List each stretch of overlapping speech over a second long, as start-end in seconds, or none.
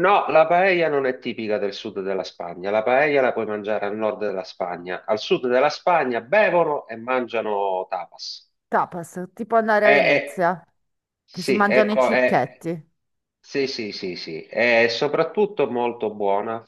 11.3-12.6